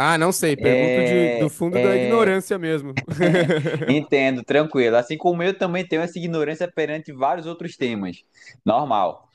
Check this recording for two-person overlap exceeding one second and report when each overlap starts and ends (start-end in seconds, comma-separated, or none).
0.6-2.4